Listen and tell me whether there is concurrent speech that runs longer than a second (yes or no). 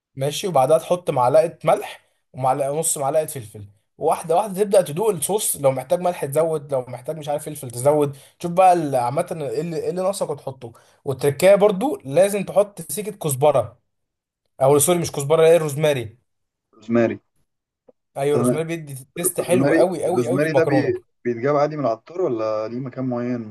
yes